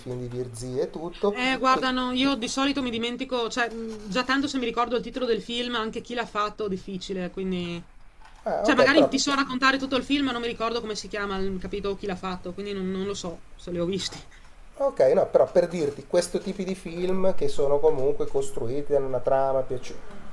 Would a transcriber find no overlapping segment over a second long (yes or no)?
yes